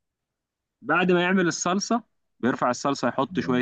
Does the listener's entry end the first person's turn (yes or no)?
no